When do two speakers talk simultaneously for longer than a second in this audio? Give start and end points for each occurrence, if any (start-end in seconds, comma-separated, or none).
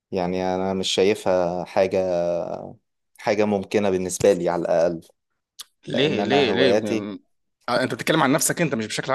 5.9-7.1